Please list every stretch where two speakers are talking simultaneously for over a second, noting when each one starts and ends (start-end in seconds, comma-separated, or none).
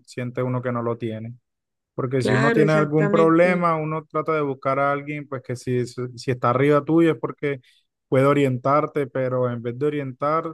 2.2-3.7